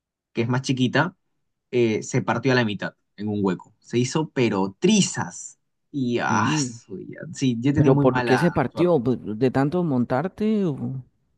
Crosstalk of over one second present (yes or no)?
yes